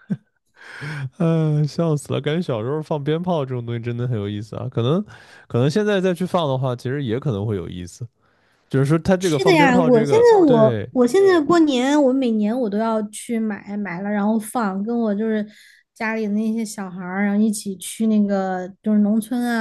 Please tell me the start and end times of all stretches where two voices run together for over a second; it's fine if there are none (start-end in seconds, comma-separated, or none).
9.2-10.9